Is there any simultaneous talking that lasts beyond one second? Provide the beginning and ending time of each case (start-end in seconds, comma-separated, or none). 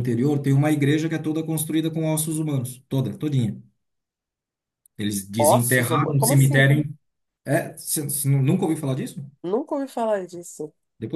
5.4-6.7